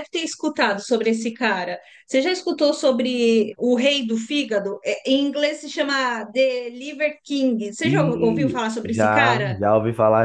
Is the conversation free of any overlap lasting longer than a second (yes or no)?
no